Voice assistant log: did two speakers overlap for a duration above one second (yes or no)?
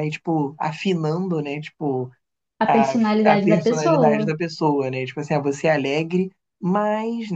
yes